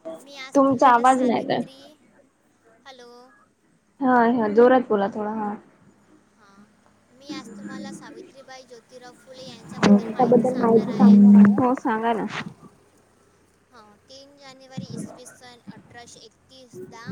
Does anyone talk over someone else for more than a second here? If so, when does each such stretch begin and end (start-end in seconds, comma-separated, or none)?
0.6-1.8